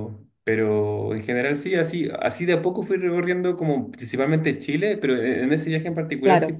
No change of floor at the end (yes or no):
yes